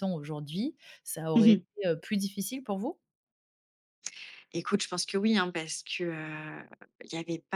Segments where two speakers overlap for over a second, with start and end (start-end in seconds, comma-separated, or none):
none